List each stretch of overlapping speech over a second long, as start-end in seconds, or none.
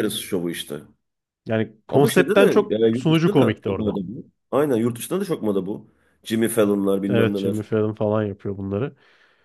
1.9-4.0